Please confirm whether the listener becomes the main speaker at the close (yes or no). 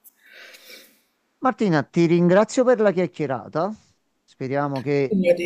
no